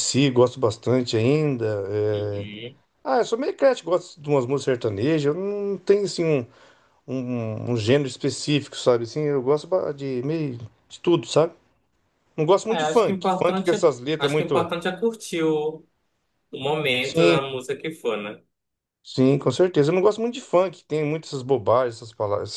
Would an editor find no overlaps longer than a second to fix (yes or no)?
no